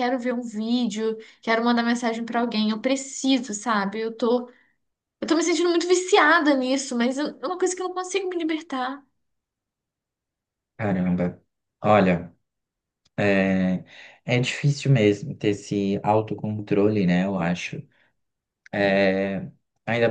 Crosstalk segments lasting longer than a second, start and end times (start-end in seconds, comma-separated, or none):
none